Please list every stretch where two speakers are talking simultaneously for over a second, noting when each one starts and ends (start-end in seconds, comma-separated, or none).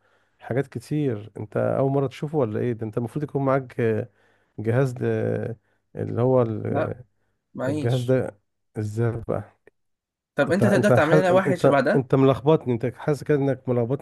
10.5-12.0